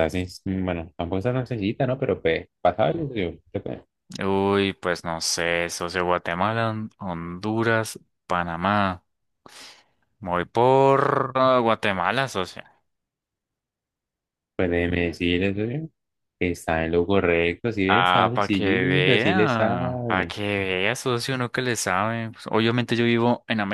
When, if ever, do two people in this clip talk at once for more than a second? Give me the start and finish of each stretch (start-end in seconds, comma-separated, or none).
17.9-20.3